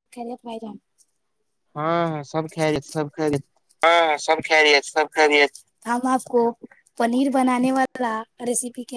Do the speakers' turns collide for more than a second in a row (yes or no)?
no